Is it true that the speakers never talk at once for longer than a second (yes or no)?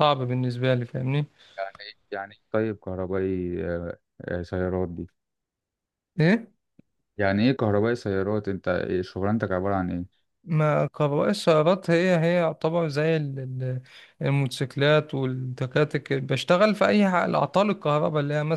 yes